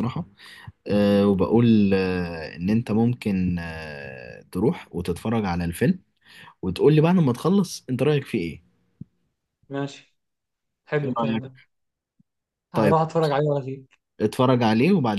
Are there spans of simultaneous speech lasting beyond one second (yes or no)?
no